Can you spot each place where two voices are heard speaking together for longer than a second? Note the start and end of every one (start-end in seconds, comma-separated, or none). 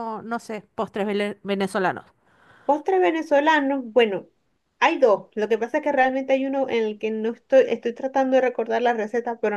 none